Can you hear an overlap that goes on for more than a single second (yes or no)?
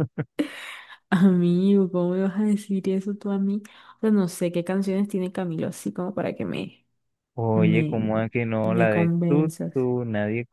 yes